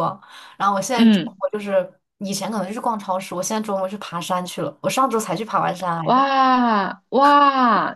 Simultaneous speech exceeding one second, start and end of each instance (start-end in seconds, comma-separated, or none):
none